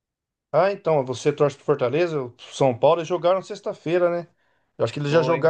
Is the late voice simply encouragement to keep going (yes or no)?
yes